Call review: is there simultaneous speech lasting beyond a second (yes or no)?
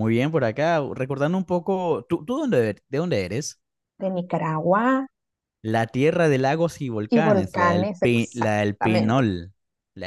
yes